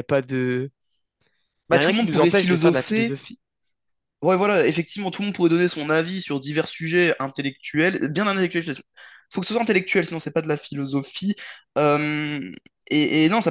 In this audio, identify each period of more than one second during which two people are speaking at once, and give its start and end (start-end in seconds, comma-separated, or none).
1.7-3.2